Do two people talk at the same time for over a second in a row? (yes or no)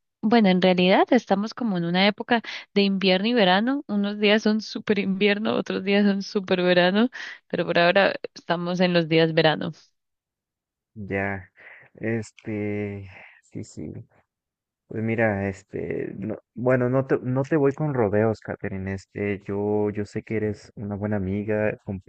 no